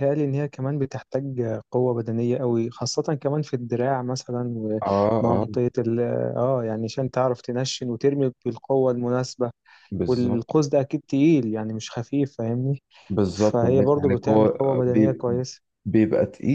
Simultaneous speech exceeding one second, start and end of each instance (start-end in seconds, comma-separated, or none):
13.3-15.2